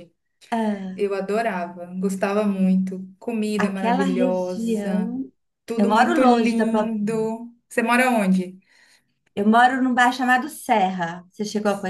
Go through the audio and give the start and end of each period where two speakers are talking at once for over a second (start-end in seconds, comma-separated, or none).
3.6-5.1, 5.8-7.0